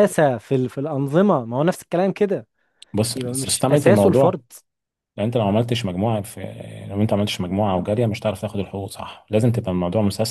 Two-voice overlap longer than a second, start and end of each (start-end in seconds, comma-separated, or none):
3.1-4.3